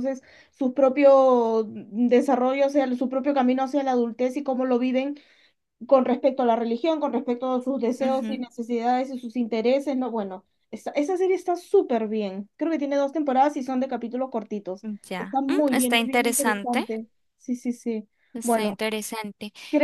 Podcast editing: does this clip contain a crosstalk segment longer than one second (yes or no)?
yes